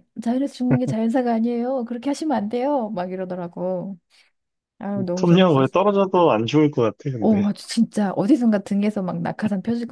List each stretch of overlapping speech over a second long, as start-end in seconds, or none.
none